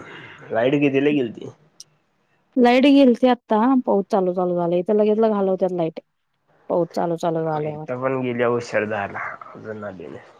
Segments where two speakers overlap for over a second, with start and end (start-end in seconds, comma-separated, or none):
none